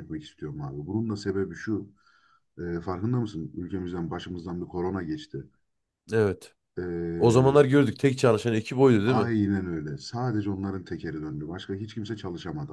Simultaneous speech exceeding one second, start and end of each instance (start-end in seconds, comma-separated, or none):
none